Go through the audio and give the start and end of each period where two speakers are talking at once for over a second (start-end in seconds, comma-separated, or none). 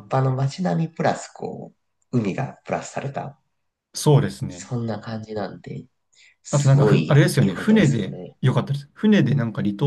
6.5-8.4